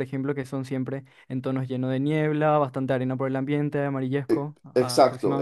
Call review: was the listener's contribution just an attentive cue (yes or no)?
no